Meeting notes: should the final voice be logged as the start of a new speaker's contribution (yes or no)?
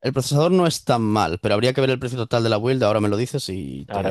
yes